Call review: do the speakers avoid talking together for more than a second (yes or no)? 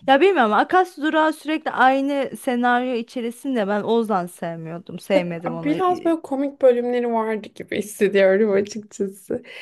yes